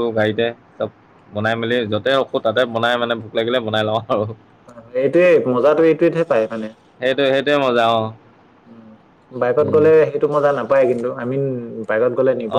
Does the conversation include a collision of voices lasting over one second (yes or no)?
no